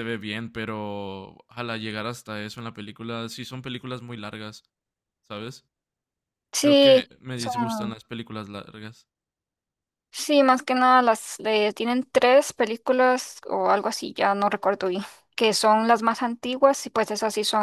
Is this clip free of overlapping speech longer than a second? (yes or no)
no